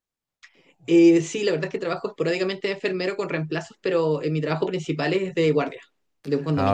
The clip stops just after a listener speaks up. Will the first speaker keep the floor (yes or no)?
no